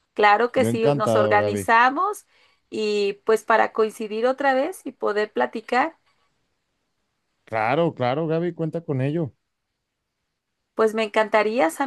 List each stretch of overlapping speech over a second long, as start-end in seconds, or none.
0.6-1.8